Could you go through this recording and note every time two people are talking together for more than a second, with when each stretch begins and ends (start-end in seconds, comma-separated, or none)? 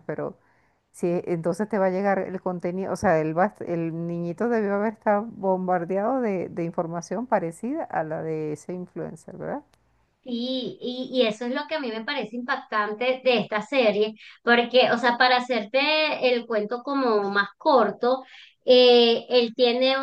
none